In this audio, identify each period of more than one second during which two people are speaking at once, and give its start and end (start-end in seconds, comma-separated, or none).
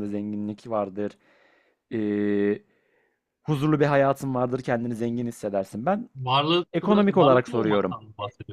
6.7-7.9